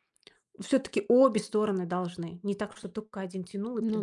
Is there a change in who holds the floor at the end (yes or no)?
yes